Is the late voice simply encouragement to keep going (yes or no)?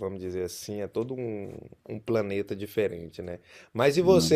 yes